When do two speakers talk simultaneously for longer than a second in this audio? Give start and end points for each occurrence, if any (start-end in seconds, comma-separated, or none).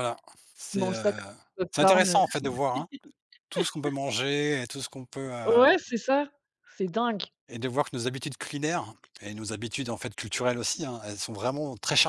none